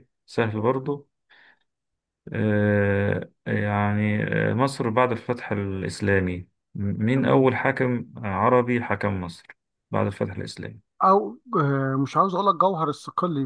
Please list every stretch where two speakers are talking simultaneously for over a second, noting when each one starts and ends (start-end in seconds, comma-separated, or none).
none